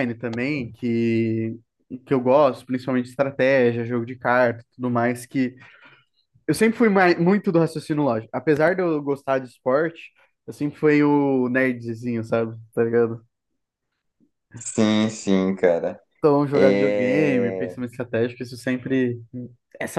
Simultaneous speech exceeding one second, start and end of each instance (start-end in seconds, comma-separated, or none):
16.5-17.8